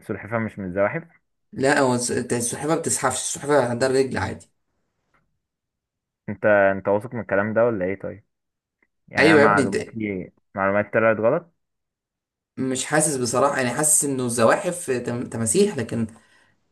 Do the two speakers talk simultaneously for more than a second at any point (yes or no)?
no